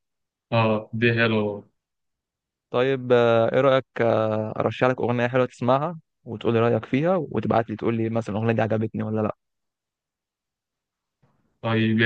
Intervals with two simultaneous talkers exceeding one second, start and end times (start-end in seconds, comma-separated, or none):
none